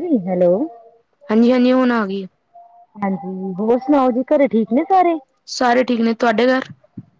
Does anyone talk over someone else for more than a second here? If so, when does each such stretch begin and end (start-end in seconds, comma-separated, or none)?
none